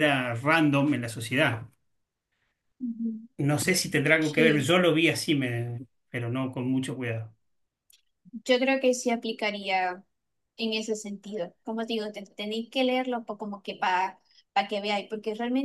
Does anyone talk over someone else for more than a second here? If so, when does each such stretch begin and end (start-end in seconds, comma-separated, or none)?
none